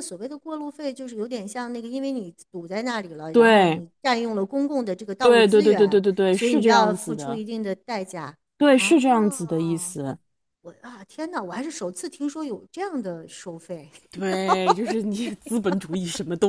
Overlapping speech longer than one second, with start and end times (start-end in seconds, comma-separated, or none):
5.2-7.4, 8.8-9.9